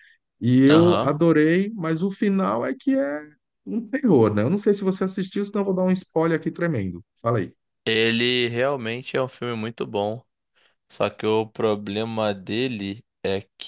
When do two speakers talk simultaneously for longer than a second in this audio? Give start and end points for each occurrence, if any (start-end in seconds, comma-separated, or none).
none